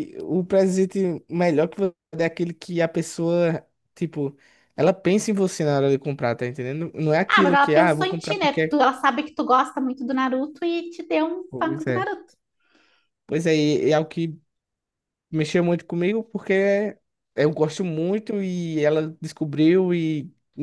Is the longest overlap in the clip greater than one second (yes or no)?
yes